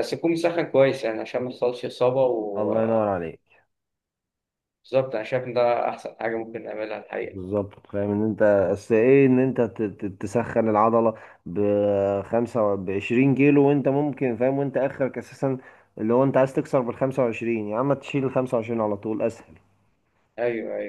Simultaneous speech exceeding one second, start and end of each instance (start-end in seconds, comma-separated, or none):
none